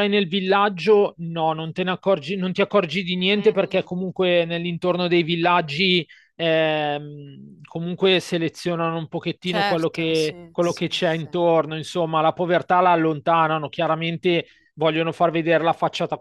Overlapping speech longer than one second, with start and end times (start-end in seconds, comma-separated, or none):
9.4-11.3